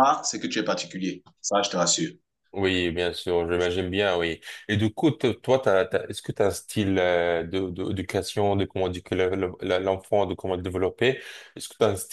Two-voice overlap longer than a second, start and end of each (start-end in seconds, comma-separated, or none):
none